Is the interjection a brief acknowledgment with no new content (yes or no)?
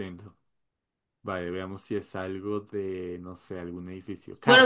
no